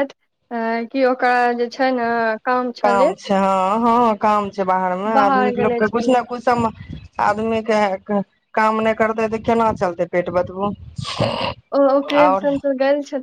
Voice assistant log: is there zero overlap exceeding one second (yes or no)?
yes